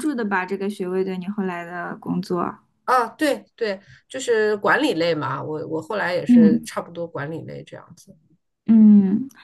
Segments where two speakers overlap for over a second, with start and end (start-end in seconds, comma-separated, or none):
none